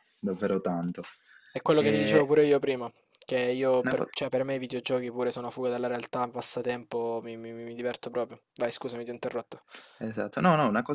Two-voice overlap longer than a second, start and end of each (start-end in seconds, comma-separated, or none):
none